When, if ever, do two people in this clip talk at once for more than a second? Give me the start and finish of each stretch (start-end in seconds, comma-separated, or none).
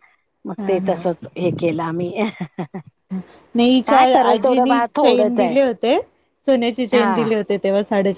3.9-5.5